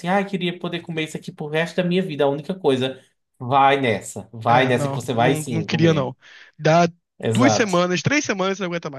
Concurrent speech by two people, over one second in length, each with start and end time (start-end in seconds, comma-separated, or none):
4.5-6.1